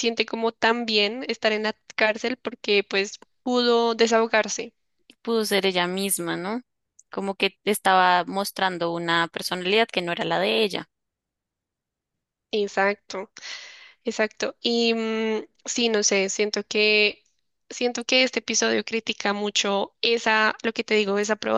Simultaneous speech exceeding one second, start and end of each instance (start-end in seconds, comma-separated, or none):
none